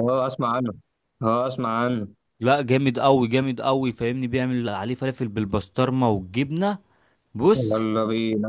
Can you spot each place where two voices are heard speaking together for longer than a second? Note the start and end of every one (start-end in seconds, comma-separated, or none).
none